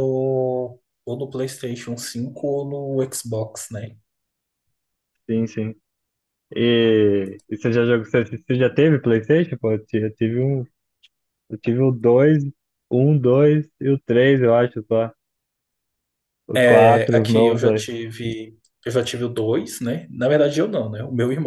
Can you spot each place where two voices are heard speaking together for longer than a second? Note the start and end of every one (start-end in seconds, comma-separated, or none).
16.6-17.8